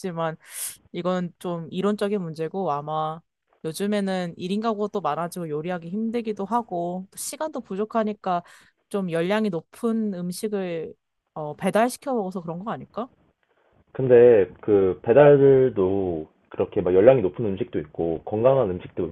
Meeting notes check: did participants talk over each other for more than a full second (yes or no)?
no